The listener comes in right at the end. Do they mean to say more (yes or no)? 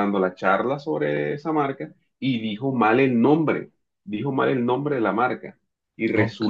no